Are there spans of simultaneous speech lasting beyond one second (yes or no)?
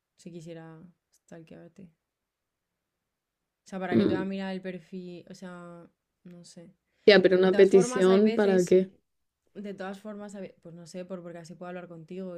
yes